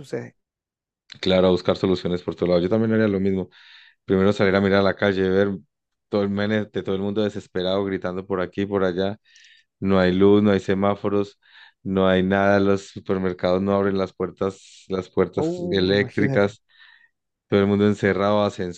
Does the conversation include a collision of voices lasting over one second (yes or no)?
yes